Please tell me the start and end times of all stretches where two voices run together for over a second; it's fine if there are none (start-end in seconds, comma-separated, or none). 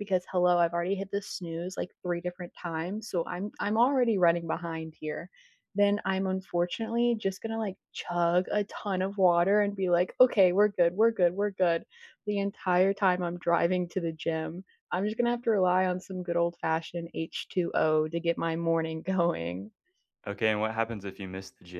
none